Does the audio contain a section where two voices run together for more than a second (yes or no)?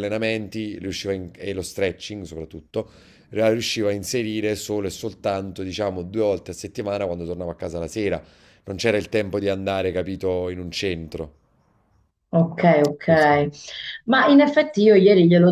no